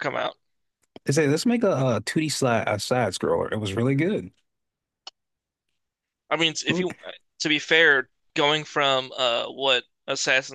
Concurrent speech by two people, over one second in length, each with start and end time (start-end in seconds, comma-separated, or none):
none